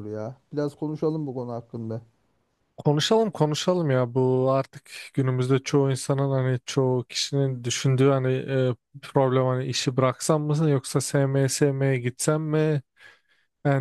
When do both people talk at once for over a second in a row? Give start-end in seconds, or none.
none